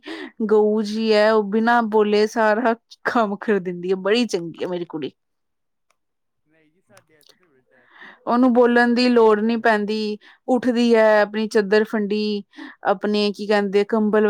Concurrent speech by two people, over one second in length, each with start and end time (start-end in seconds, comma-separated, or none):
8.3-9.6